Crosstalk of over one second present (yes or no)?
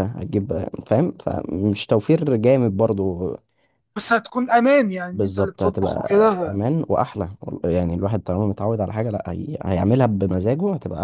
yes